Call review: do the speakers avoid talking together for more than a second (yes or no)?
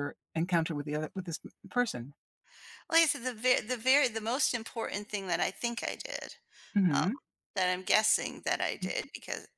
yes